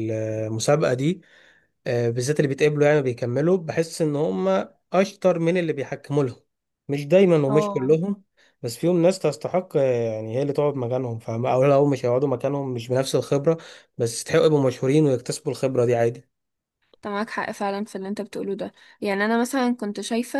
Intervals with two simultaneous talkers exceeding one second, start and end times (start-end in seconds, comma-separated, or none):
none